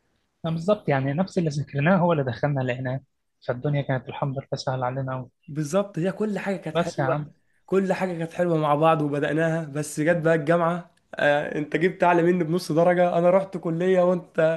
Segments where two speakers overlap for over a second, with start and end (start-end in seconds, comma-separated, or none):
none